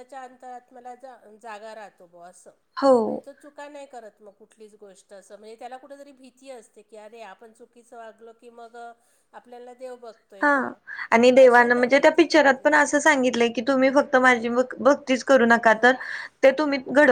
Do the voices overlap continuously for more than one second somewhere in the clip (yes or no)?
yes